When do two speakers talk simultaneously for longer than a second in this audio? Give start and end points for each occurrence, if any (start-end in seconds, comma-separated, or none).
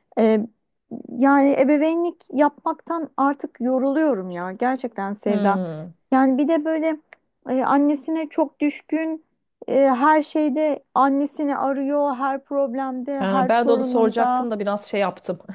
13.2-14.5